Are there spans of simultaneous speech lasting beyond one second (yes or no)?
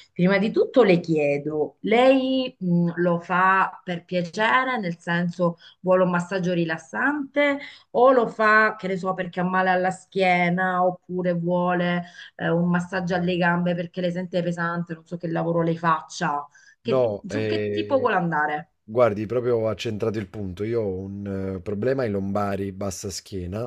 yes